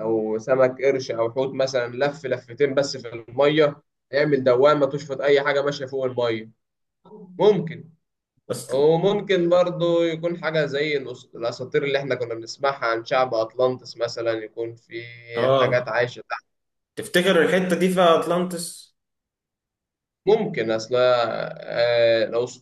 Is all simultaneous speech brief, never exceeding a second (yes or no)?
yes